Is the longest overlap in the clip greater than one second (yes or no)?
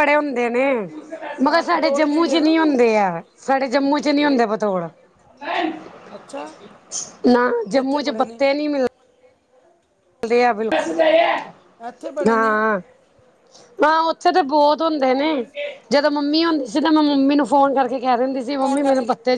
yes